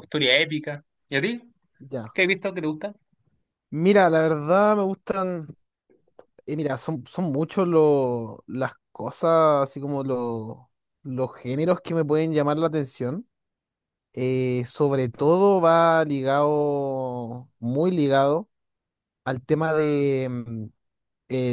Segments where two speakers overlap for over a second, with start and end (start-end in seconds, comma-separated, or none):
none